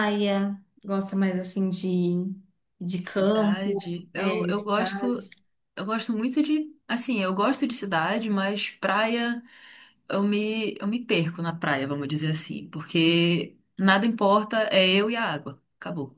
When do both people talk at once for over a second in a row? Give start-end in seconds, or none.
3.0-5.2